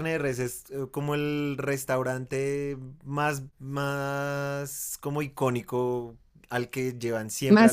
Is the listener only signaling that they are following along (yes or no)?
yes